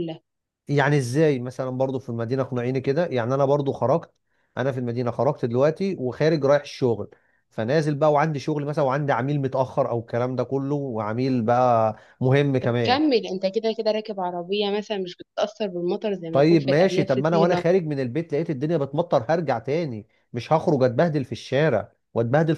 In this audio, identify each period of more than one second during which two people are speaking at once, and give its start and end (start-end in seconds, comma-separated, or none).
16.3-17.6